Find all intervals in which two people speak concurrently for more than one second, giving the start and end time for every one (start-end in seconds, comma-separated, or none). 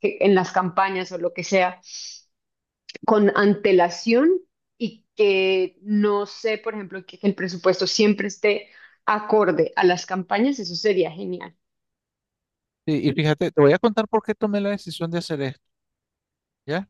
none